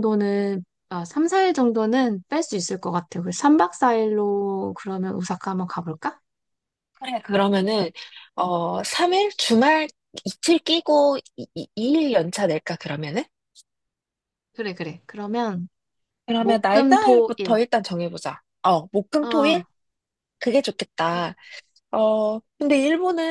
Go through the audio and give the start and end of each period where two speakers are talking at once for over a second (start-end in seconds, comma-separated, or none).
16.4-17.6